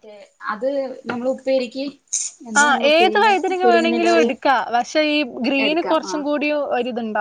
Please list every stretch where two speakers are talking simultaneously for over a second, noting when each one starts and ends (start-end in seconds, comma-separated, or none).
2.6-4.3